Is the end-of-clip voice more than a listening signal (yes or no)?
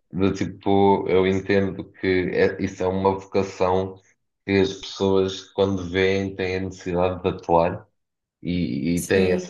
no